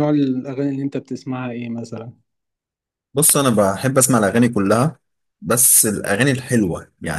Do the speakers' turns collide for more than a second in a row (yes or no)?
no